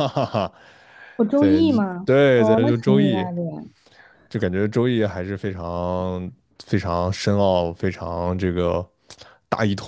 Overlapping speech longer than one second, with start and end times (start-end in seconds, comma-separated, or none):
1.3-3.2